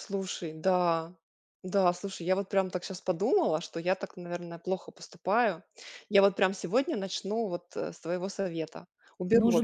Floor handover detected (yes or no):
yes